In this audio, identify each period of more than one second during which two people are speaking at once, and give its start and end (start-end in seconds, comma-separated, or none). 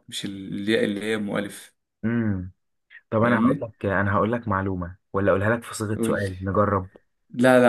none